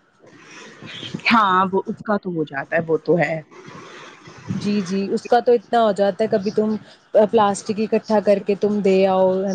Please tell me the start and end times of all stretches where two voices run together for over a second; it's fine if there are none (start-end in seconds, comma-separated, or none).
none